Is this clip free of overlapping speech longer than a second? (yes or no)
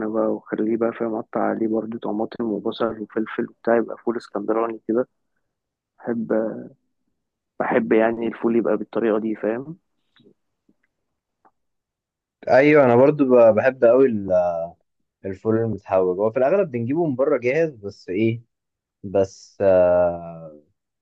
yes